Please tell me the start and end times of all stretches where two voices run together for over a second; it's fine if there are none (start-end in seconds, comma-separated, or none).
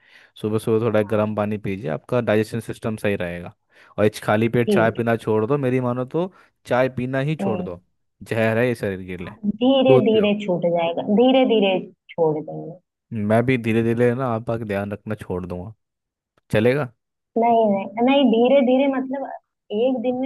none